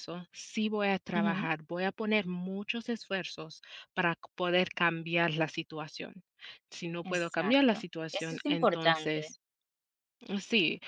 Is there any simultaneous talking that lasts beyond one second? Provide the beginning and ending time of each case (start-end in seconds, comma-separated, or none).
7.0-9.3